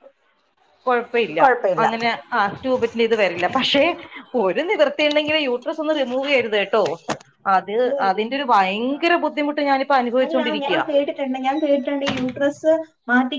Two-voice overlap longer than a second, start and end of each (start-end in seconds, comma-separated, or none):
none